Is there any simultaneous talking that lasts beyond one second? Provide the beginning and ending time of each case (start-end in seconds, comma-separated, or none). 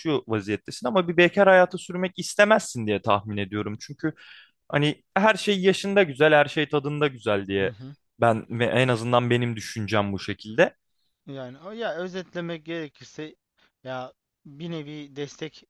none